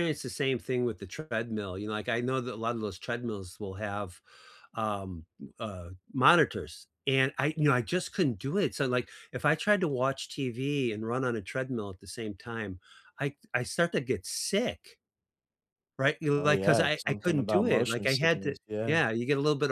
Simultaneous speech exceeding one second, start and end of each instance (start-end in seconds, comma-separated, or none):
16.3-19.0